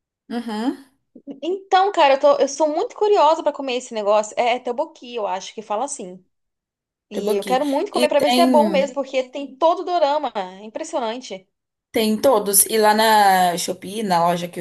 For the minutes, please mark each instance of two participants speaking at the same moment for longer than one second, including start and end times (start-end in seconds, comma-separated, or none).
7.1-8.9